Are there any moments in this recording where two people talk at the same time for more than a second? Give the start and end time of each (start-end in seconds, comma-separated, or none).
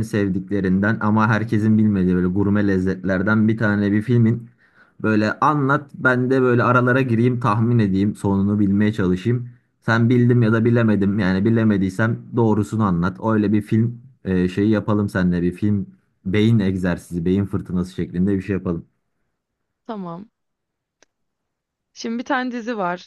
none